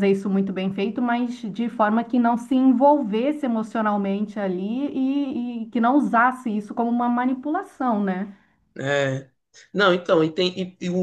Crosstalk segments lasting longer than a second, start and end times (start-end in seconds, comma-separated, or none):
none